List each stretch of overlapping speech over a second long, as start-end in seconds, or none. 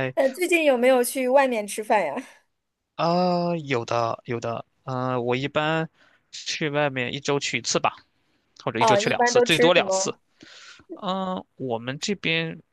8.8-10.1